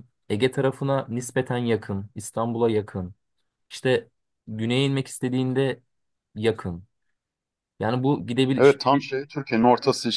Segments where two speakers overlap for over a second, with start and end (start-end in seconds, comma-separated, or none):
none